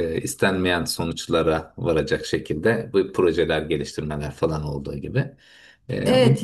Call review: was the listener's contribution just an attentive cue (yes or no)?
no